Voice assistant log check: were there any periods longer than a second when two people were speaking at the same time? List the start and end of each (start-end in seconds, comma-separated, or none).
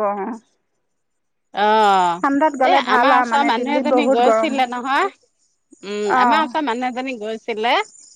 2.7-4.7